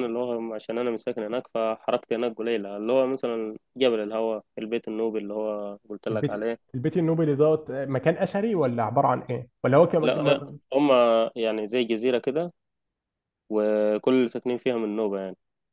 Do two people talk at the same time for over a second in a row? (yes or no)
no